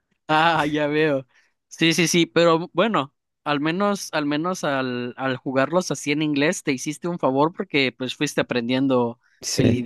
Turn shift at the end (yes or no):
no